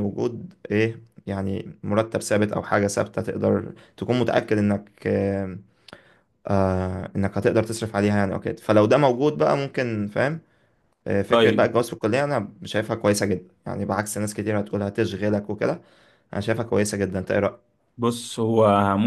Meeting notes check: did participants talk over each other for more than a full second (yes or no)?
no